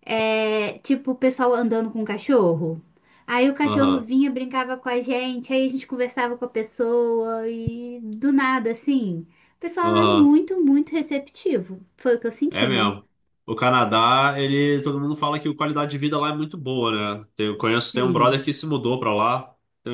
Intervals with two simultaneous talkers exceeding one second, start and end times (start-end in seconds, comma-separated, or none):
none